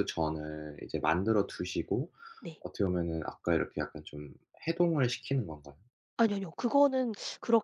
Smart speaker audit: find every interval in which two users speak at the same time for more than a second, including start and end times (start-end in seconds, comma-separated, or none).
none